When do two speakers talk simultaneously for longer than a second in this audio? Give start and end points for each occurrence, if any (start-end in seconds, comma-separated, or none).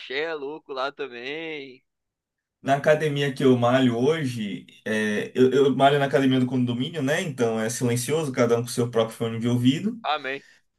none